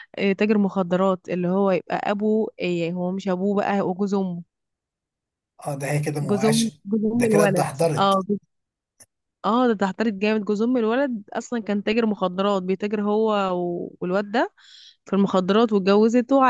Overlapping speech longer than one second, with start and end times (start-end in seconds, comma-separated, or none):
6.2-8.2